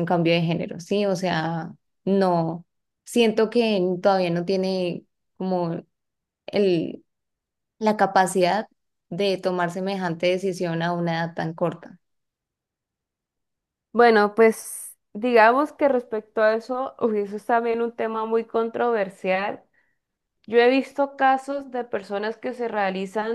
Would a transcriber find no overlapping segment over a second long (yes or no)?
yes